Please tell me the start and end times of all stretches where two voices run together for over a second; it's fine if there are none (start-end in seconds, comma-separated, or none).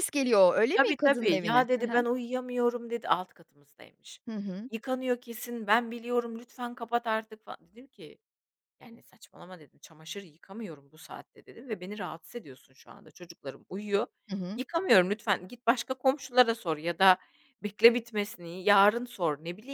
0.7-2.0